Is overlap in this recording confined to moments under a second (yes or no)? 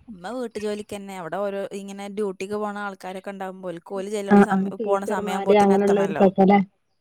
no